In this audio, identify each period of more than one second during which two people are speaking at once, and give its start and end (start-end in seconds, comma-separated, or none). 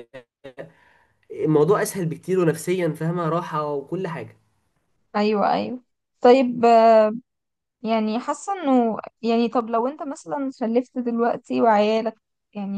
none